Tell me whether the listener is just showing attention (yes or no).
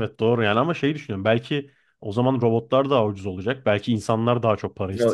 no